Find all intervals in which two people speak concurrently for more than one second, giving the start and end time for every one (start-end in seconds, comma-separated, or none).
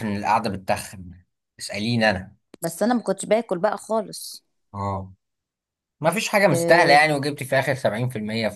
none